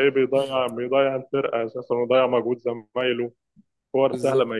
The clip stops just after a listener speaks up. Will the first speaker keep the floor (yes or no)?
yes